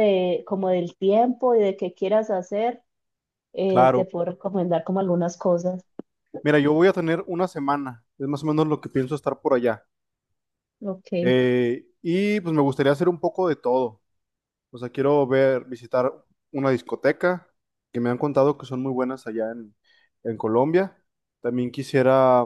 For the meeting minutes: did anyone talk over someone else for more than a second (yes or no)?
no